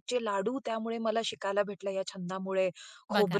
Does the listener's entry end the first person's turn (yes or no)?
no